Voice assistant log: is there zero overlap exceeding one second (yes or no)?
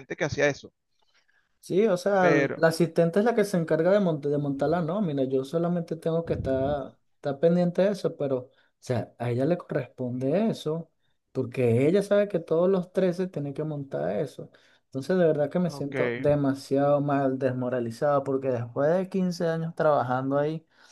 yes